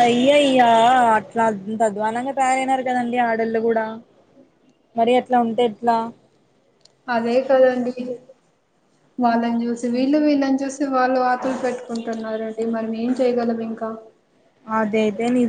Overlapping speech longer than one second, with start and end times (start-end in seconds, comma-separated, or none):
none